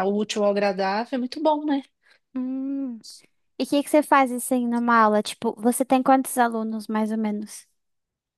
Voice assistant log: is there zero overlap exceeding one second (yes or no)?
yes